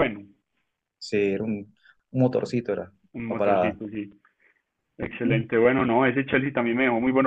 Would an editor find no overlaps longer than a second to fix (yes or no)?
yes